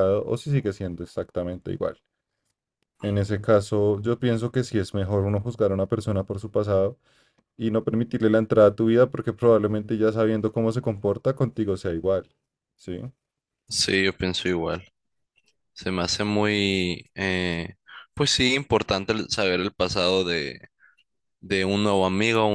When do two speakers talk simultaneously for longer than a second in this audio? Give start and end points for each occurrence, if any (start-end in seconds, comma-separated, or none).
none